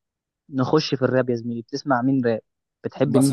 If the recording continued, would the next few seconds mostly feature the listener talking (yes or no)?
yes